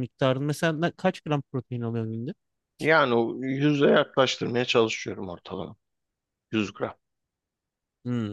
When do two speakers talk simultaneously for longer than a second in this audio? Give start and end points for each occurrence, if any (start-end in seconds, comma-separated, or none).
none